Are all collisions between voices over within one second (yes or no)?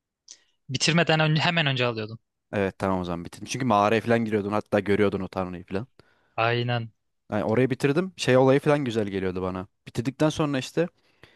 yes